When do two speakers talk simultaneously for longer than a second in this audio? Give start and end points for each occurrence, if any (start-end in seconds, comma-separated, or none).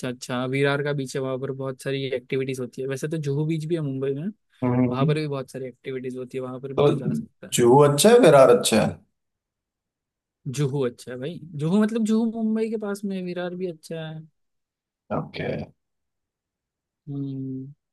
none